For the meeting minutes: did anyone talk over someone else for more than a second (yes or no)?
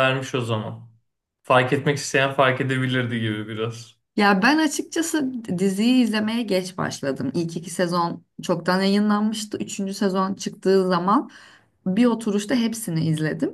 no